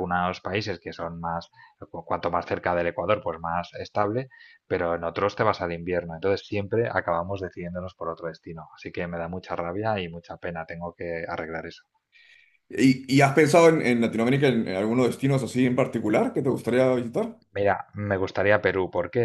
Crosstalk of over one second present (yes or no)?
no